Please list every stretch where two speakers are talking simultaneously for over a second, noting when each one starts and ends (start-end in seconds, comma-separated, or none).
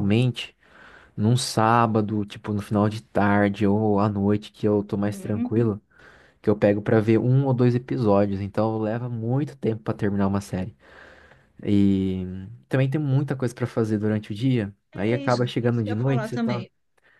14.9-16.6